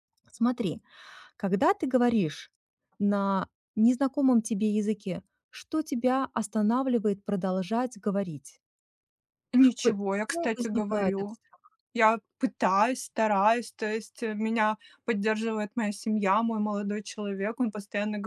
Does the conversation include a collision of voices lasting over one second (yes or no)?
yes